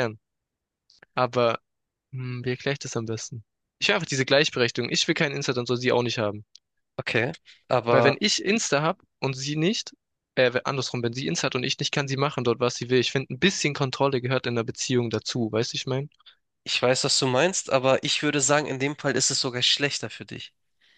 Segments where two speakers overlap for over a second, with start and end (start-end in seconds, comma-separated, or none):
none